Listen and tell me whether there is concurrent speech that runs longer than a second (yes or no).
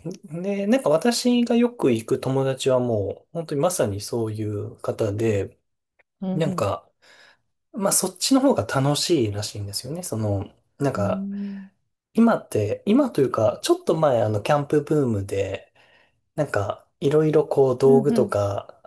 no